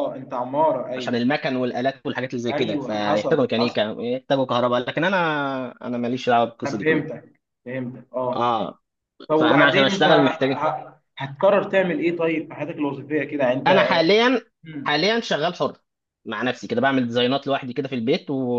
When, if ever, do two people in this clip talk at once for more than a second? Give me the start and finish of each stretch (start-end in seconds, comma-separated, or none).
2.5-3.8, 9.4-10.6